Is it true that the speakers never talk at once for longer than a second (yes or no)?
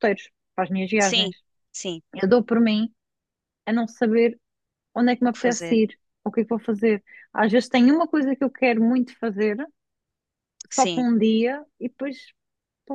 yes